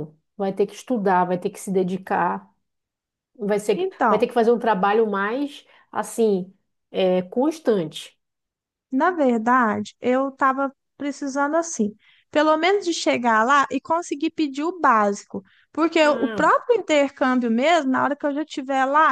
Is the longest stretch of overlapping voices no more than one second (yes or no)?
yes